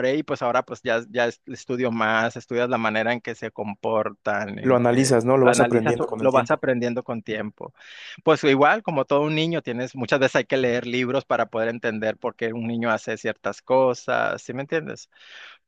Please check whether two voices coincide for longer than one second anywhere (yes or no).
yes